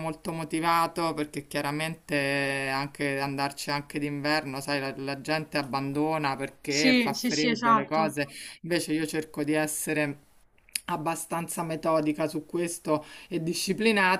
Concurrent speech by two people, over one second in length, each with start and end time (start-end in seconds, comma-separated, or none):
6.7-8.2